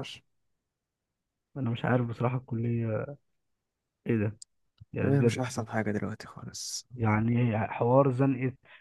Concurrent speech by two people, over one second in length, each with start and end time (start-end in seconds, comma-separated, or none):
none